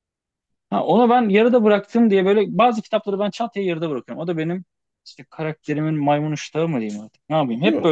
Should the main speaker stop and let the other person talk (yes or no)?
no